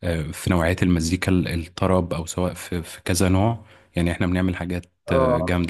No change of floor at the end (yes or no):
yes